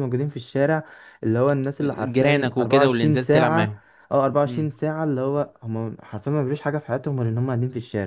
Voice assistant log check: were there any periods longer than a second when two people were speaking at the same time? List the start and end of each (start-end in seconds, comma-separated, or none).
2.0-3.8